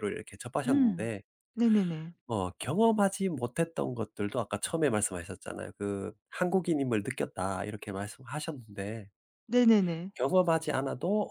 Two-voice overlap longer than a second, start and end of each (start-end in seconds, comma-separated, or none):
none